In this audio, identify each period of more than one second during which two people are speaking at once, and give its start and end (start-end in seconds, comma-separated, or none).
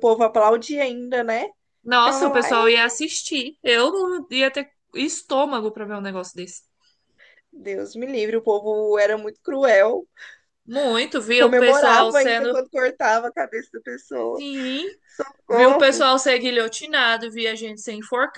11.3-12.6